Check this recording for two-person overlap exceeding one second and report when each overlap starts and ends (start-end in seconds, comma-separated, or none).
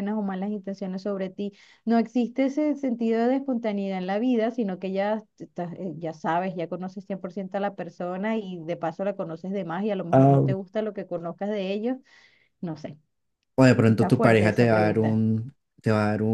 13.8-15.2